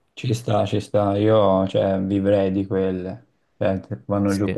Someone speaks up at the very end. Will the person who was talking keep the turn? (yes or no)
yes